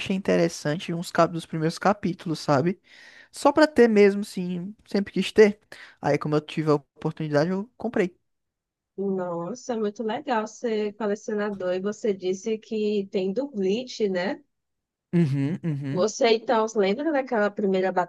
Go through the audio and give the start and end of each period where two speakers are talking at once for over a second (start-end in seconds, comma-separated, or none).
none